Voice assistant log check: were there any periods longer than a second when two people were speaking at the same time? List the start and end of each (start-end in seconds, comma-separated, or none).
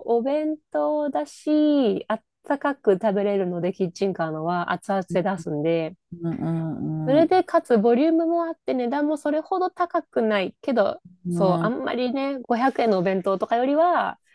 none